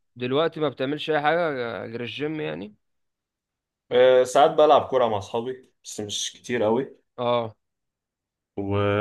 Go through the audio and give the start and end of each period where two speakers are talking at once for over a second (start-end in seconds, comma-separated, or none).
none